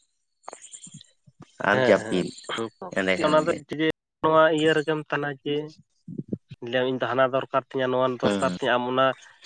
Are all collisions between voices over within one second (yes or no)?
yes